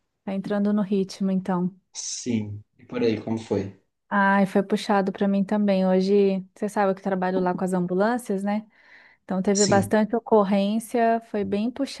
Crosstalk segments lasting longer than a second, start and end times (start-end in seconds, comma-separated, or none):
none